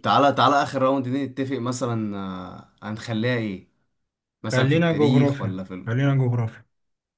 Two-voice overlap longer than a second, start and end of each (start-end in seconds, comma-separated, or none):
4.5-5.7